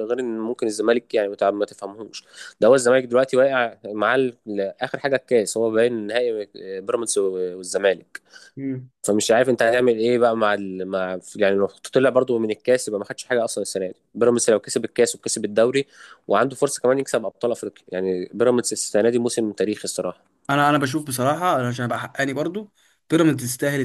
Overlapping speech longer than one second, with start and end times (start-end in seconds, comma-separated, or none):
none